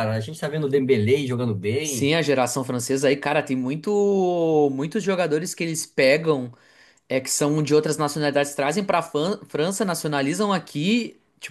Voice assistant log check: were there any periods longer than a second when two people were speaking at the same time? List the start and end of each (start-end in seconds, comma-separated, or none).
none